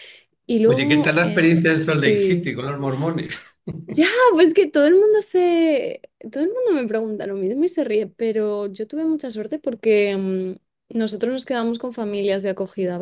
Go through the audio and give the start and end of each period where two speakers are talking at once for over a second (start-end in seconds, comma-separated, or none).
0.7-2.5